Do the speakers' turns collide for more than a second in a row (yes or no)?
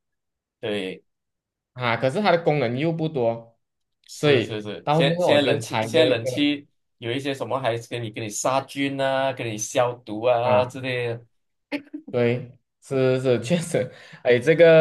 yes